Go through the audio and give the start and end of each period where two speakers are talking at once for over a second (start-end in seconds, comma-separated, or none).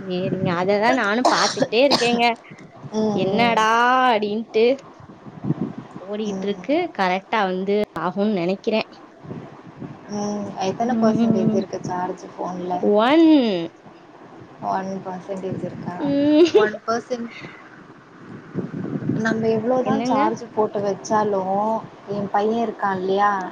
none